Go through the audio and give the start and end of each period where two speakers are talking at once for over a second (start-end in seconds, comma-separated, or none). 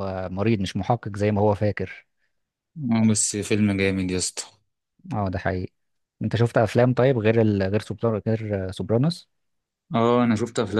none